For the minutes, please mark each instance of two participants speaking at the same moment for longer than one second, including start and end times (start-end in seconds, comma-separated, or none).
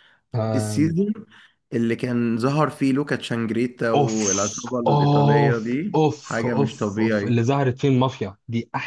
3.9-7.4